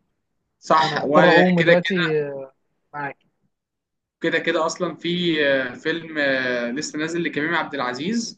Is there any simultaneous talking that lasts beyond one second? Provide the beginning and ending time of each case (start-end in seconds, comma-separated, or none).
0.7-2.0